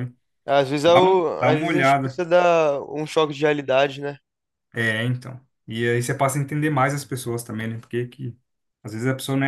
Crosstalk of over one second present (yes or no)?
yes